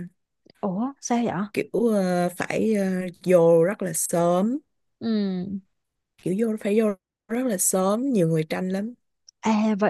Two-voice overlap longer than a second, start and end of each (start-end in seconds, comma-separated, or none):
none